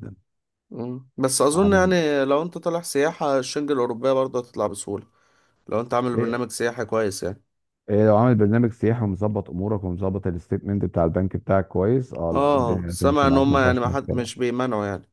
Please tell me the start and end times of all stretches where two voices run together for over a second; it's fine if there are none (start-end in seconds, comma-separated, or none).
12.3-14.4